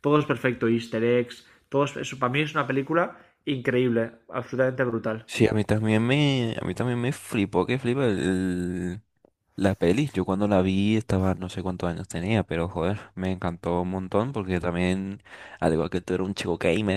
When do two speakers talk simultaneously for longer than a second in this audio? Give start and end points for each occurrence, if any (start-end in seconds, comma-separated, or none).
none